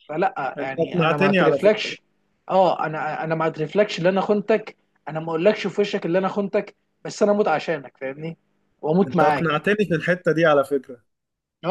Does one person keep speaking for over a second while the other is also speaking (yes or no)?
yes